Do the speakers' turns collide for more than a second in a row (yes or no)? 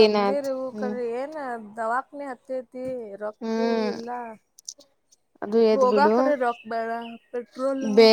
no